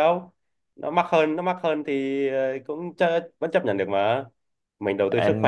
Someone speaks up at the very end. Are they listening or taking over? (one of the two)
taking over